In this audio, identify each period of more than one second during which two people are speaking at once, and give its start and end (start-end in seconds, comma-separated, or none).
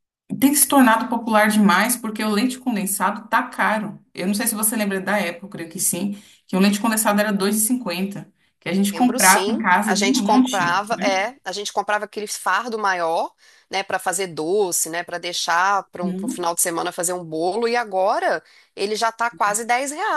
8.9-11.2